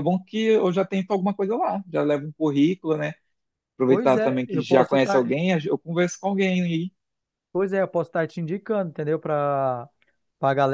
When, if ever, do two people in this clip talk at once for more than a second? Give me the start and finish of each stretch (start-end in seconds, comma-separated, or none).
3.9-5.3